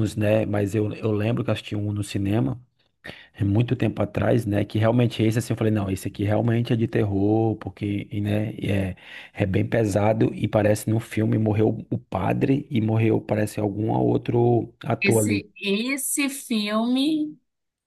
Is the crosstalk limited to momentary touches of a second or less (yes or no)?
yes